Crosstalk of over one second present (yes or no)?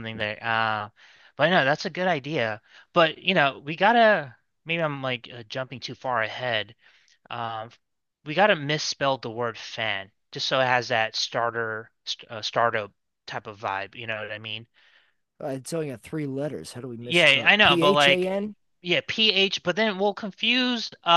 yes